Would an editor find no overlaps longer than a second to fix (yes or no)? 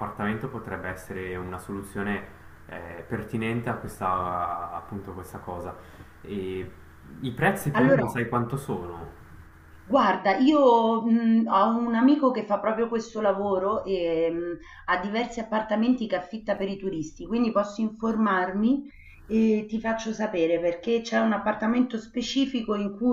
yes